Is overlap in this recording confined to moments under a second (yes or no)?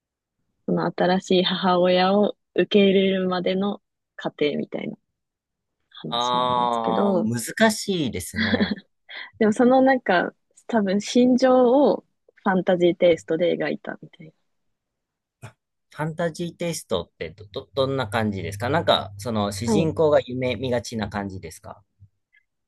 no